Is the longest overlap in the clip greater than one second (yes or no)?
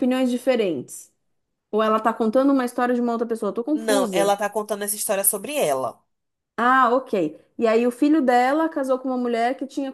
no